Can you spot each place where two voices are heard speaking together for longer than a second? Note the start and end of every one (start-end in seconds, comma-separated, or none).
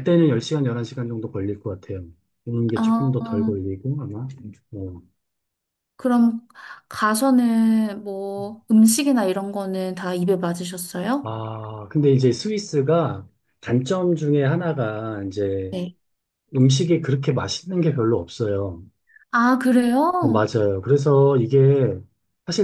none